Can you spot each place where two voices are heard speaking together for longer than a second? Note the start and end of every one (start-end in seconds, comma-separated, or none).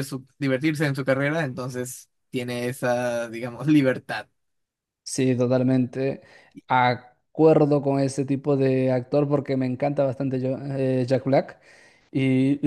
none